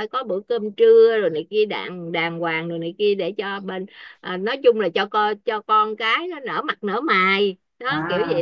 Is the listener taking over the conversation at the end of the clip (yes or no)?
yes